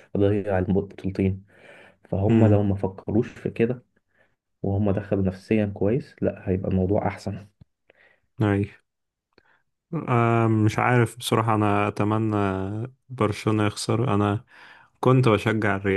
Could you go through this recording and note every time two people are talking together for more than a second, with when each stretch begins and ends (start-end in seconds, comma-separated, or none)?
none